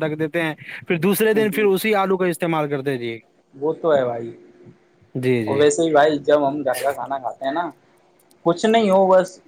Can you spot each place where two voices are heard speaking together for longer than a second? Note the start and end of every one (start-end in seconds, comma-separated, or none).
none